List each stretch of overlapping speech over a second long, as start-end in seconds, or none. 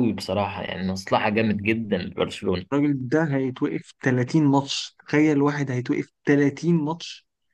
none